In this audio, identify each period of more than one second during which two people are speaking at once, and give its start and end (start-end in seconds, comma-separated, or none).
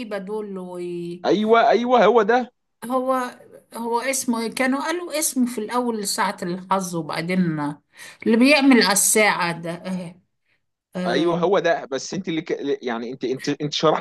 none